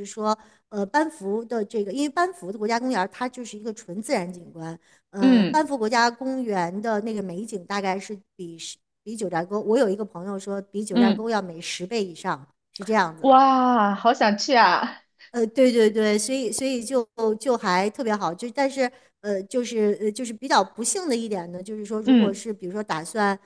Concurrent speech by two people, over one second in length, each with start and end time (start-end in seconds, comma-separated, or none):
none